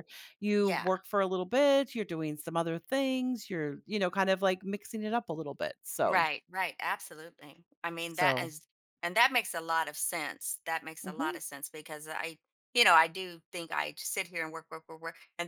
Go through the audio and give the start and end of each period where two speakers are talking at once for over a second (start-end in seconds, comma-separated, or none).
none